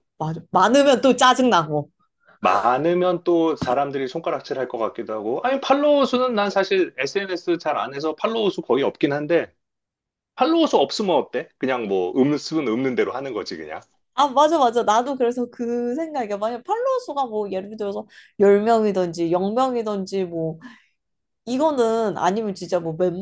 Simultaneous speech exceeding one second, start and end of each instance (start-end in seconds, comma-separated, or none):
none